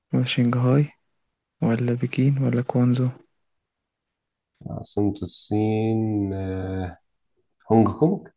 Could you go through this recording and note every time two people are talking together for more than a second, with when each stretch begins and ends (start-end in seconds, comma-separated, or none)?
none